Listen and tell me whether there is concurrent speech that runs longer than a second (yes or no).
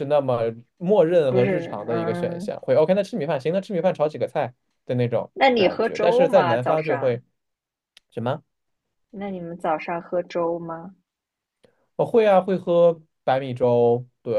yes